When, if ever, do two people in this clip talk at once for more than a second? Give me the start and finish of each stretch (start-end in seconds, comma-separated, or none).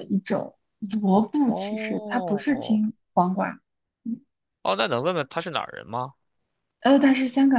1.1-2.8